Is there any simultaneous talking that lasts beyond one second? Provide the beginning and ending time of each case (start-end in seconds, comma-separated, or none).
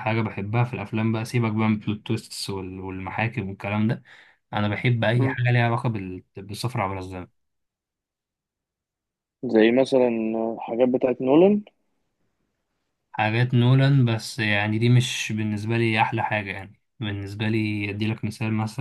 none